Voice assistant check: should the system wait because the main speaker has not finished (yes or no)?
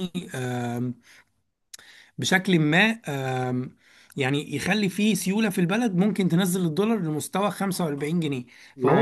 no